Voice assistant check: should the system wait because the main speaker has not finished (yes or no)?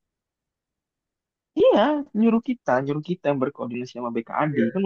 yes